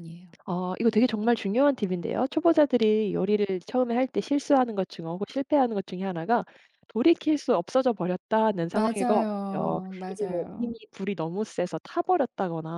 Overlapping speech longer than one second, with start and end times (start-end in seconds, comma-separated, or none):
8.7-10.7